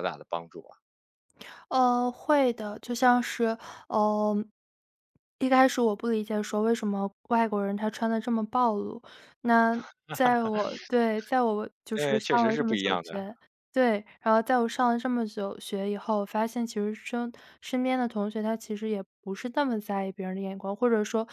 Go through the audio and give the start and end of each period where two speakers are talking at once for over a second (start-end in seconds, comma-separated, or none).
11.9-13.2